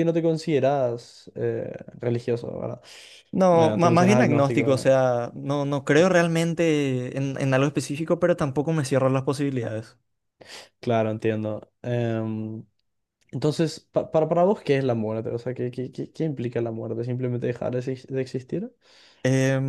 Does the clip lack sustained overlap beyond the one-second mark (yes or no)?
no